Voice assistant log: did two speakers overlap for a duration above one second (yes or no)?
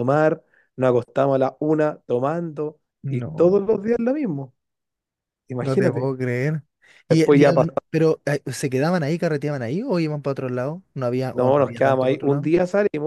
yes